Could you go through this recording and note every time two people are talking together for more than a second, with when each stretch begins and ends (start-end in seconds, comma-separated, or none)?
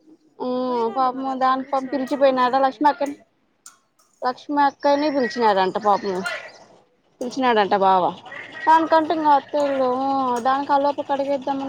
0.7-2.8